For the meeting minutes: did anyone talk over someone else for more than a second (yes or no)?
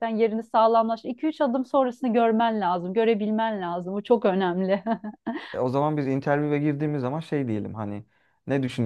no